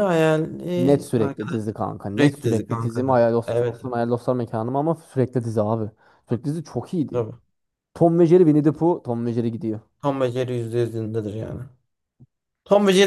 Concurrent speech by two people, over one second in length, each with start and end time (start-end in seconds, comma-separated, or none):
2.1-4.0